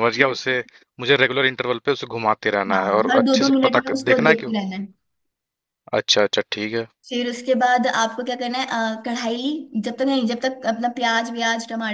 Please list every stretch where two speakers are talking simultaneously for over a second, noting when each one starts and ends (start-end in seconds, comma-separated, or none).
2.7-4.5